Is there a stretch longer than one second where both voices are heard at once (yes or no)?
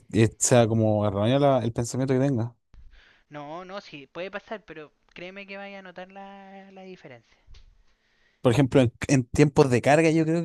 no